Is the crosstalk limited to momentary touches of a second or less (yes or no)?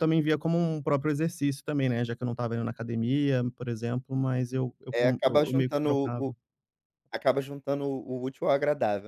no